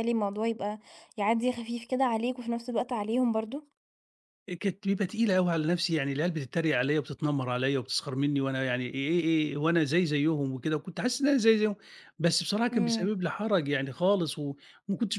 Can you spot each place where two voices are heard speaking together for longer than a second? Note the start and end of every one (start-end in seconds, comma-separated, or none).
none